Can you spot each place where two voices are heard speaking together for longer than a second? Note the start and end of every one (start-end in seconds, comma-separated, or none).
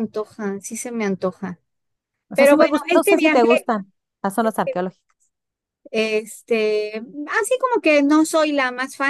2.3-3.6